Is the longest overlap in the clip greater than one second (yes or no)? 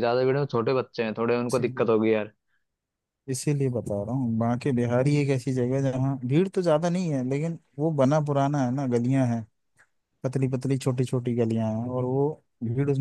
no